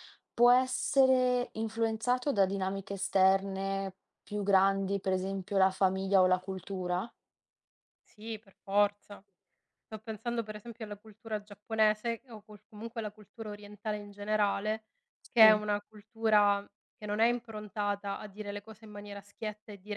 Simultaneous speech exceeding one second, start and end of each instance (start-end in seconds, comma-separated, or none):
none